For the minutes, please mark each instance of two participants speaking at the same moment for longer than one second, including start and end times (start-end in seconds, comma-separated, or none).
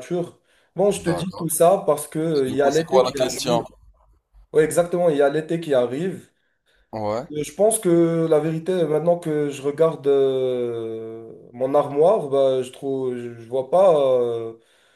2.4-3.6